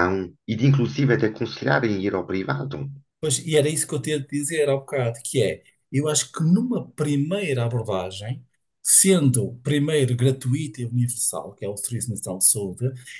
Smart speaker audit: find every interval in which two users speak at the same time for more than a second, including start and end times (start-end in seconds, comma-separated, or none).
none